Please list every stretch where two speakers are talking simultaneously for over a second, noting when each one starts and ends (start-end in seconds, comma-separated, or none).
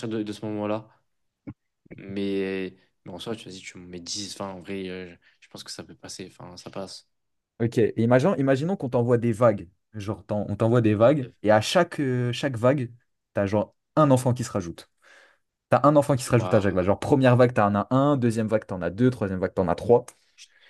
none